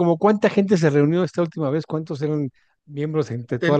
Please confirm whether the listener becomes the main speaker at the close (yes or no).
yes